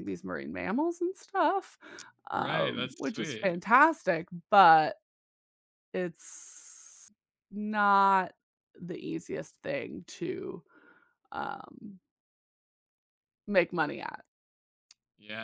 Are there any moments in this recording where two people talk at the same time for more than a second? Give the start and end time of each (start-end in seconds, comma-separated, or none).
2.3-3.6